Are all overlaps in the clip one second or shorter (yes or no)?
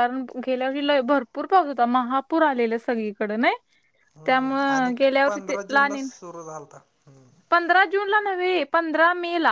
yes